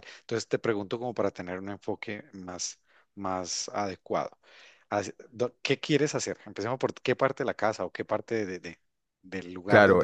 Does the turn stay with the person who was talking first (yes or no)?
no